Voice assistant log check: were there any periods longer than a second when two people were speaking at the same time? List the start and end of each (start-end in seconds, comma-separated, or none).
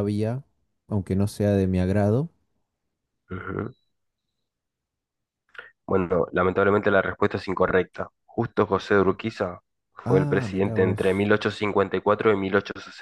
10.0-11.3